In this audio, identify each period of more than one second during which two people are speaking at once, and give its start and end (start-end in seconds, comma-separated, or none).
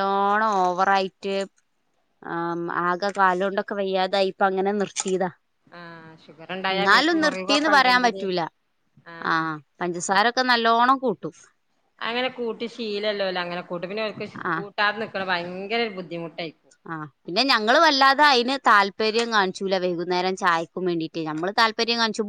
6.8-8.2